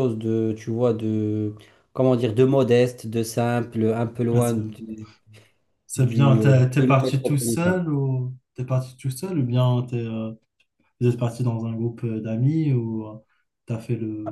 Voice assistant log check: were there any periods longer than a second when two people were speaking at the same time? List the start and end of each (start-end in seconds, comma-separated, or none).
6.0-7.8